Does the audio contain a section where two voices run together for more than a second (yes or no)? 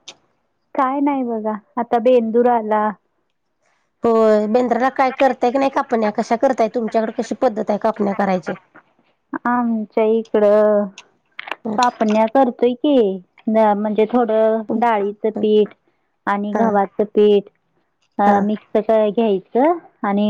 no